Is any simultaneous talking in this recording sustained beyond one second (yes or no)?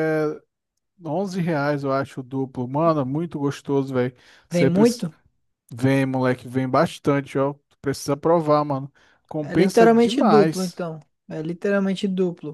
yes